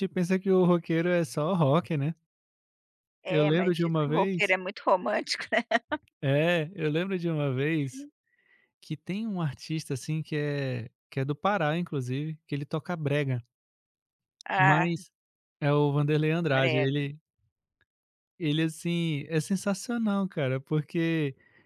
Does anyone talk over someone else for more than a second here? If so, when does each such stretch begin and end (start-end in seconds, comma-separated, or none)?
3.3-4.5